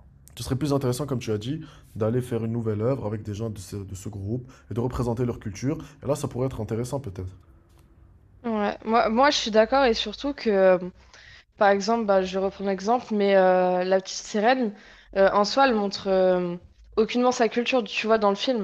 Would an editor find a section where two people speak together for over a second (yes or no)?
no